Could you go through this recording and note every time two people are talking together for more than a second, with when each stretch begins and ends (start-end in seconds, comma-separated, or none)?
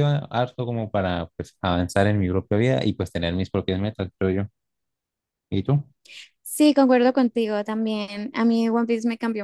none